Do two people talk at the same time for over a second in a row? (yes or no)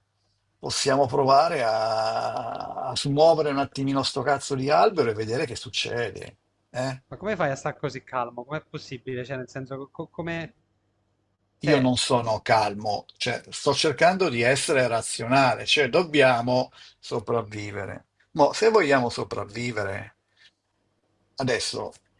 no